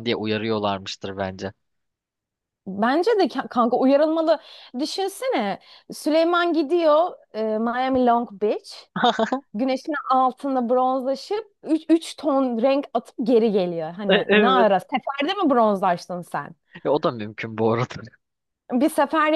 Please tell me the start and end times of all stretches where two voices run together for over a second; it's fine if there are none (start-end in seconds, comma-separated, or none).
none